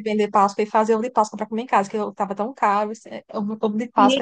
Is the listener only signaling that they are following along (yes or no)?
no